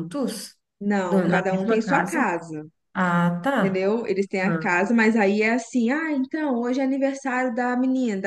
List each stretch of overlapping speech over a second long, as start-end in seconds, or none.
1.1-2.3